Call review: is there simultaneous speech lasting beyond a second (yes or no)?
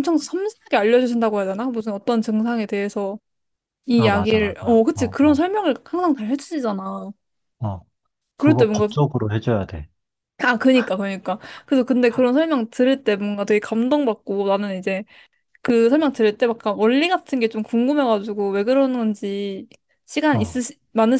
yes